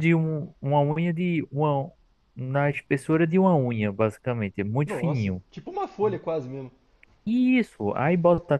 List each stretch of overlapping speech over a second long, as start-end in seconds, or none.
none